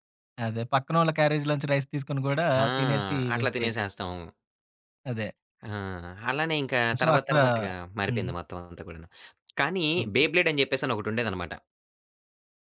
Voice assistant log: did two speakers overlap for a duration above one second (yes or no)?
no